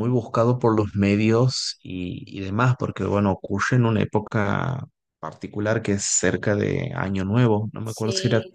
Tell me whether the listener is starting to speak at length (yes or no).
no